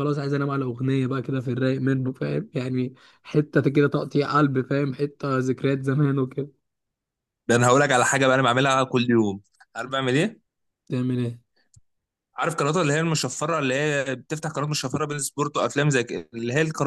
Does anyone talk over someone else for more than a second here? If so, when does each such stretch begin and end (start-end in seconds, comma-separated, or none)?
none